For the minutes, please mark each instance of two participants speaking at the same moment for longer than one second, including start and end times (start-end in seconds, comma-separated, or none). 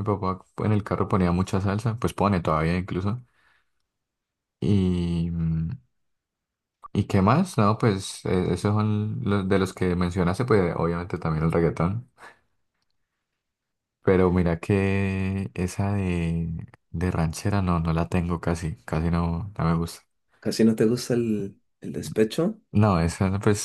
none